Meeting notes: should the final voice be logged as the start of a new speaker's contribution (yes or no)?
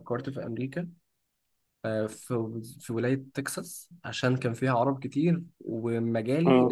no